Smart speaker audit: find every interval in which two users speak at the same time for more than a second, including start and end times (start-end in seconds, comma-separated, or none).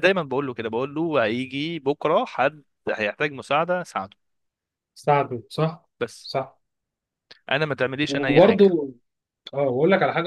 none